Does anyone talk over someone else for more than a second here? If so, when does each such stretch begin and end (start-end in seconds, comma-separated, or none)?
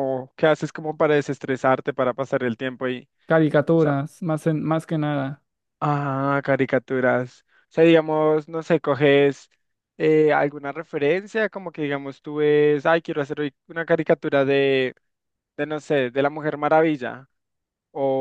none